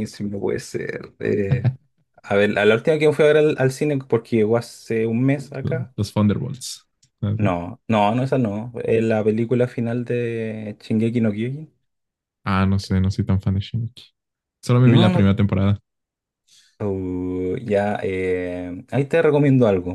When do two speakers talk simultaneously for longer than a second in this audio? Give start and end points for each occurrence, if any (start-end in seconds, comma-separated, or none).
none